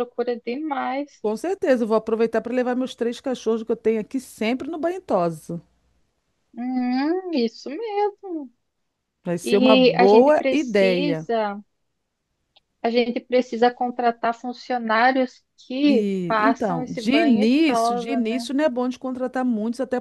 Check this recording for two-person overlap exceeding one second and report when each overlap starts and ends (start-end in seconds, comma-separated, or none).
9.4-11.3, 15.8-18.4